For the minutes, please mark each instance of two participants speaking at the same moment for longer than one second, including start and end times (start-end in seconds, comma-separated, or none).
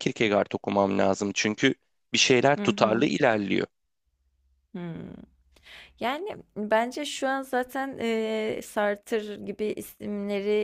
none